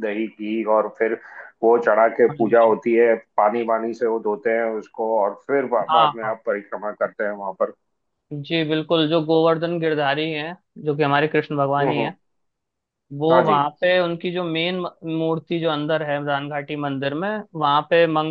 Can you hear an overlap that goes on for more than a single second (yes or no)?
no